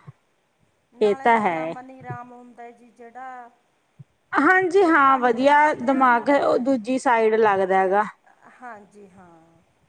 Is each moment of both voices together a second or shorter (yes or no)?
no